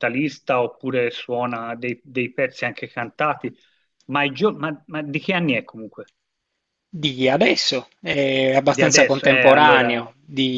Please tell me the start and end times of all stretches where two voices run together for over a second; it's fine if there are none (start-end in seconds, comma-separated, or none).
8.7-10.1